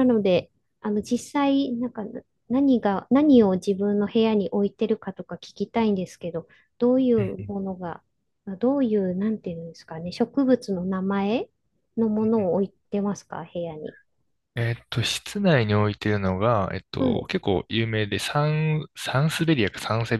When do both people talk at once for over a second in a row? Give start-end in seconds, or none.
none